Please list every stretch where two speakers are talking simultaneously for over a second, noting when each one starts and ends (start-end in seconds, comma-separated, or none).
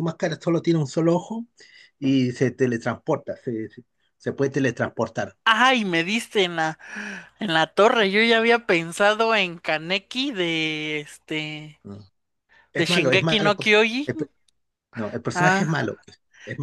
12.7-14.3